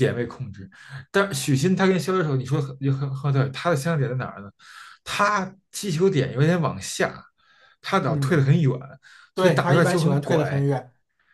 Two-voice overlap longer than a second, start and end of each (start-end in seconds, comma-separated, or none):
9.3-10.7